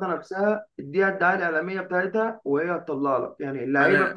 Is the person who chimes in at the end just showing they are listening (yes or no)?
yes